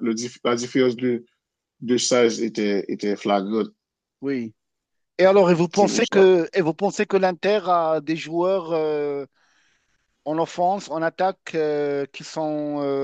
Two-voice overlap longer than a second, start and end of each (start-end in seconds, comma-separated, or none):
none